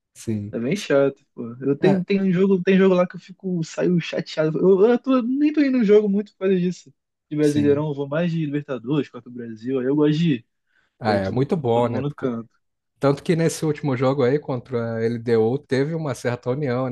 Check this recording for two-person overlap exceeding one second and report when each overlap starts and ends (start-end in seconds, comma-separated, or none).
11.1-12.3